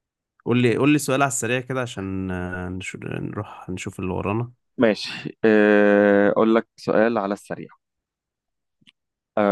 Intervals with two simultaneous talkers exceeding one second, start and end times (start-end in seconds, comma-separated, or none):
none